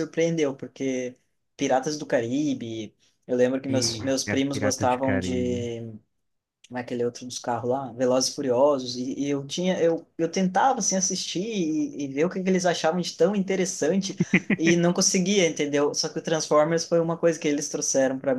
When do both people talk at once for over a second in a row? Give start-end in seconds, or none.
3.7-5.7